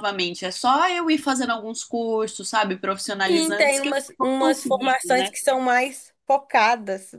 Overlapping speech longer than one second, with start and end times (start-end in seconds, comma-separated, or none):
3.2-5.3